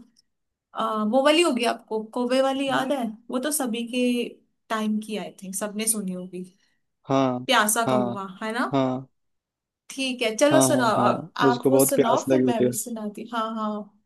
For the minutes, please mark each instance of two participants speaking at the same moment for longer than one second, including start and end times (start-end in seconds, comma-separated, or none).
10.5-12.7